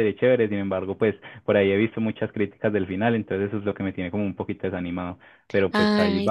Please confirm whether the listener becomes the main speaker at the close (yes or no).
yes